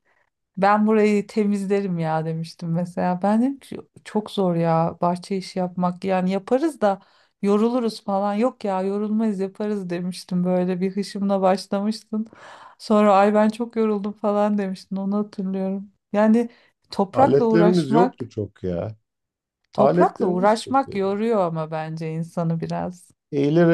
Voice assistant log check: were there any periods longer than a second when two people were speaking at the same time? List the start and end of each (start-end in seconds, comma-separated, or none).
17.1-18.3, 19.8-21.2